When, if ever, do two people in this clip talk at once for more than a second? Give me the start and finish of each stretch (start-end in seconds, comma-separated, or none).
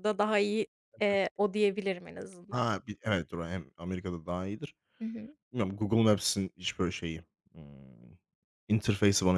none